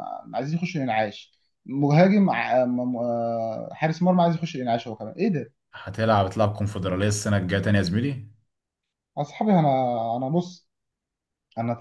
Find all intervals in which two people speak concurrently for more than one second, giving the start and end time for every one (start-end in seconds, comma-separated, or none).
none